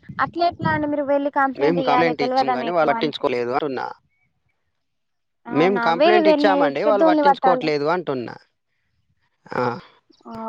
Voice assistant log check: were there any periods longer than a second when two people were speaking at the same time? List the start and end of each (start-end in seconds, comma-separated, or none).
5.6-7.7